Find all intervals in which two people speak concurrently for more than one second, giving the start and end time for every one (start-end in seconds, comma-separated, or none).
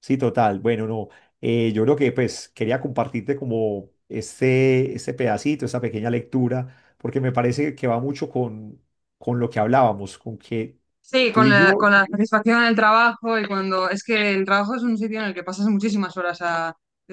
none